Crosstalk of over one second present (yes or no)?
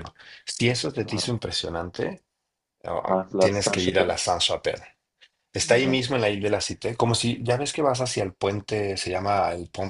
yes